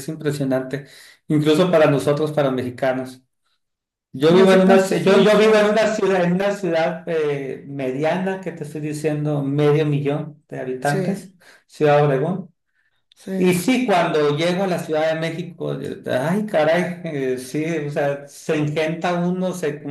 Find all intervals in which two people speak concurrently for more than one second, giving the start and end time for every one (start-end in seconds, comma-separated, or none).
4.3-5.7